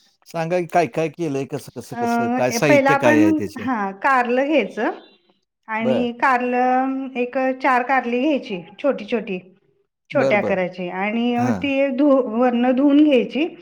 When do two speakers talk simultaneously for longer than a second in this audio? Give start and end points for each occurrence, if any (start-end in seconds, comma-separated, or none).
2.0-3.7